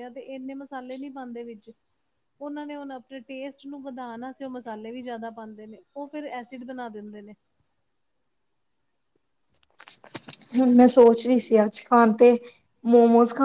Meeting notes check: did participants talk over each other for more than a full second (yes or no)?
no